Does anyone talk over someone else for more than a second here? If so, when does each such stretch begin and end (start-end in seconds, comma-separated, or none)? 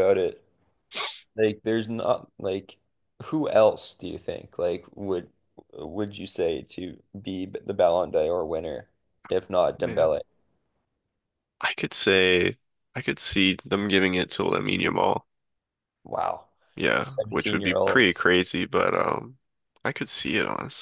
17.0-18.2